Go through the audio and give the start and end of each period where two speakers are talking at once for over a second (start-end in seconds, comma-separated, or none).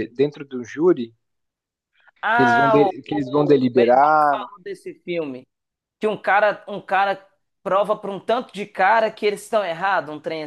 2.3-4.4